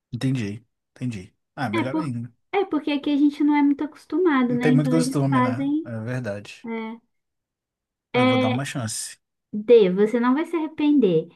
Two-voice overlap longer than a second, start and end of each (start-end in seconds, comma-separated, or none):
4.5-5.9